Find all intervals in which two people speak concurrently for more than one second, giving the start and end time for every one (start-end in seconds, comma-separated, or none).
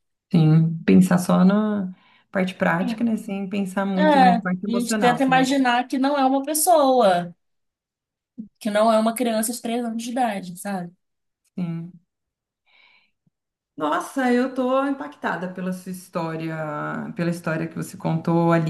4.0-5.5